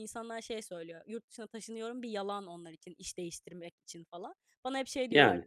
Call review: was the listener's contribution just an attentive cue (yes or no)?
yes